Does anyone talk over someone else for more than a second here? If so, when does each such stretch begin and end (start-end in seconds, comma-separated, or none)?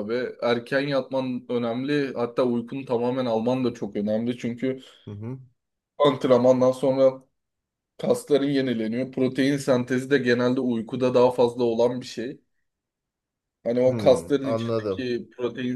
13.8-15.1